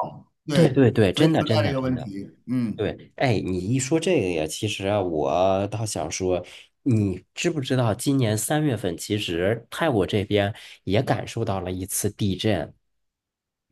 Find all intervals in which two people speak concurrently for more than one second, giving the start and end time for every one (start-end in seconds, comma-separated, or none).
0.5-2.1